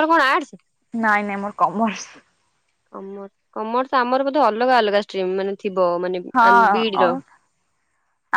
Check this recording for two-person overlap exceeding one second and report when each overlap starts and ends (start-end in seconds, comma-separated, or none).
none